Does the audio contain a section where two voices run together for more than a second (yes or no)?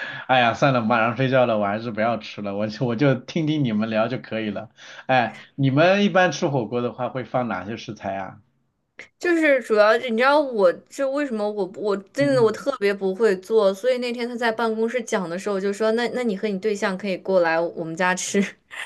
no